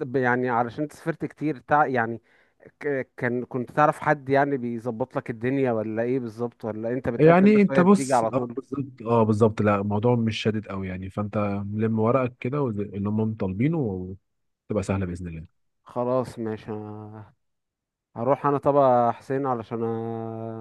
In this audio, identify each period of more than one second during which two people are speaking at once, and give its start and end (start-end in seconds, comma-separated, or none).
7.2-8.6